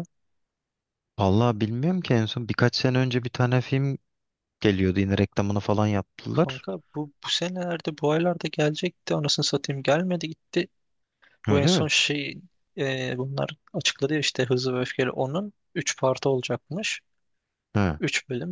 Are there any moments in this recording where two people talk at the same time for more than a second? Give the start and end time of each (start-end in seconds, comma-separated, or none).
none